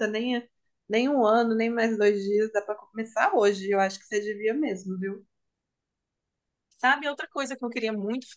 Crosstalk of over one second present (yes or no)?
no